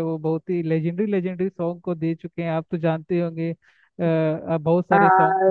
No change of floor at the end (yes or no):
no